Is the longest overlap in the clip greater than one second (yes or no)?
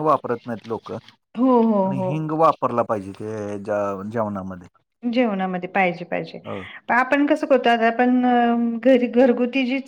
no